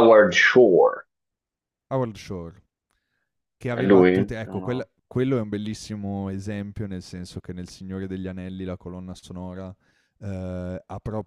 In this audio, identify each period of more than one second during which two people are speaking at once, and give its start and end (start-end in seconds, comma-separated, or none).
3.7-4.9